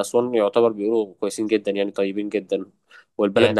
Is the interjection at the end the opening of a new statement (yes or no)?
no